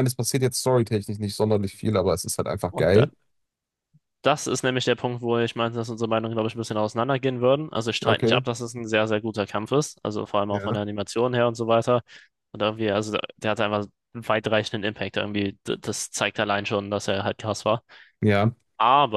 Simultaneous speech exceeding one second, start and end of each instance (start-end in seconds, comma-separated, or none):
none